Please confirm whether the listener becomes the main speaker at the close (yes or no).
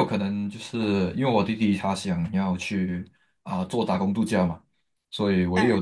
no